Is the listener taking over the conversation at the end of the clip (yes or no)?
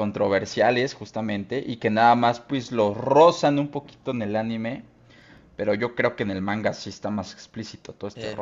yes